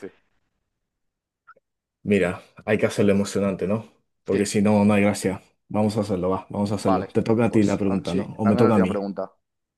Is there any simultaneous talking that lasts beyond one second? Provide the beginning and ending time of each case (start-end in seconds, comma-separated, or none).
6.8-9.0